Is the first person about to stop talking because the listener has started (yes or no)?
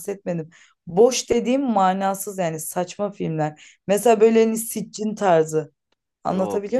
yes